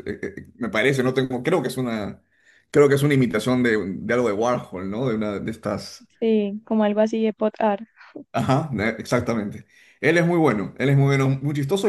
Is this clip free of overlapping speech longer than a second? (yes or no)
yes